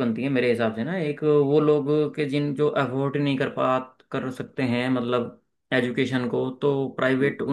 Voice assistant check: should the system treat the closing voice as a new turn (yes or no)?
no